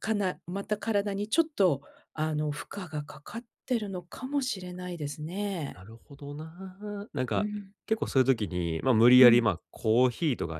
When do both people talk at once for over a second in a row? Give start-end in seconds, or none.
none